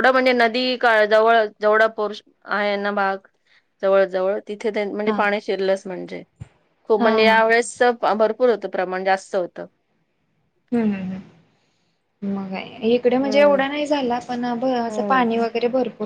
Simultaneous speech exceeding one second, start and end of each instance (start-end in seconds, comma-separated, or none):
none